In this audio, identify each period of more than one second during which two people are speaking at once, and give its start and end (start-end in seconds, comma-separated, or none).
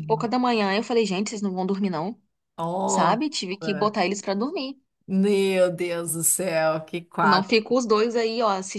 none